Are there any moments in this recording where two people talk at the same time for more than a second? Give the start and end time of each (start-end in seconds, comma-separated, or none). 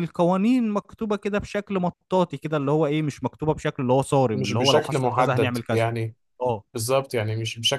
4.3-5.9